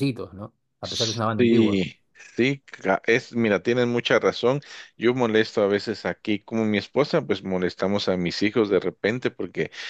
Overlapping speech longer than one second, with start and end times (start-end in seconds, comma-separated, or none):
none